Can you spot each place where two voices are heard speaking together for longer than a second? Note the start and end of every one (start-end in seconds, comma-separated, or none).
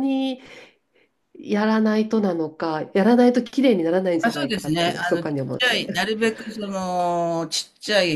4.2-5.9